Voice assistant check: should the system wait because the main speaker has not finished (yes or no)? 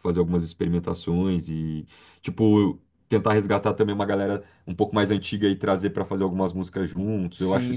no